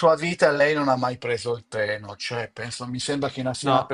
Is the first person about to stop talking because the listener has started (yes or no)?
no